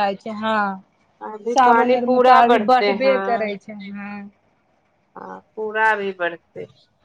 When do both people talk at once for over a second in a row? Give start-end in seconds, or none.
1.5-3.2